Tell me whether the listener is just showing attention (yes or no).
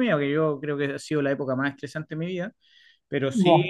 yes